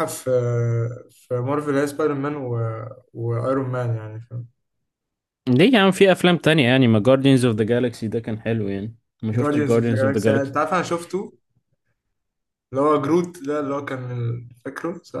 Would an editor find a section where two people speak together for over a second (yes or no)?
yes